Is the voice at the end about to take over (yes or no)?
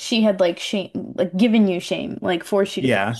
yes